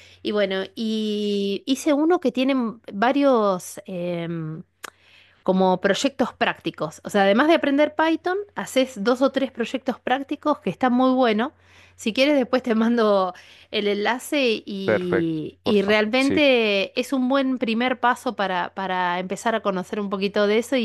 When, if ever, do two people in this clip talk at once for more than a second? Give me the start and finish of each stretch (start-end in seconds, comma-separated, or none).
14.8-16.4